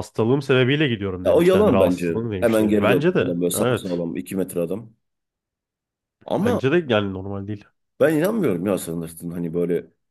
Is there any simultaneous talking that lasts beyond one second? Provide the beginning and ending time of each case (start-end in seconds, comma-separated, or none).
1.2-4.0